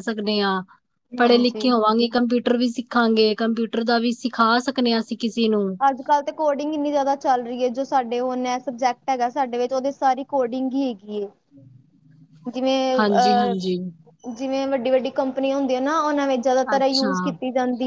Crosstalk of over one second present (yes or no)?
no